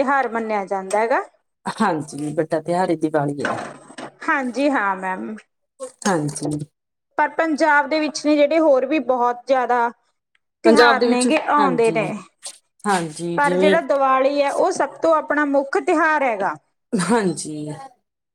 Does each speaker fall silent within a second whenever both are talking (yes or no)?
no